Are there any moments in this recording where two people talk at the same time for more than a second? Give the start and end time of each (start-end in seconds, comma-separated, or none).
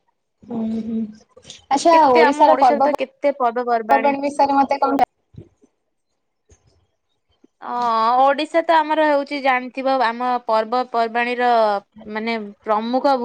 1.9-4.1